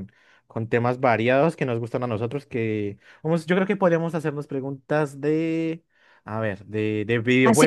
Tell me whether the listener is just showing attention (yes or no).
no